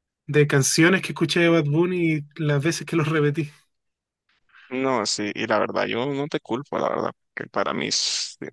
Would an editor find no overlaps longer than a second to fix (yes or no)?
yes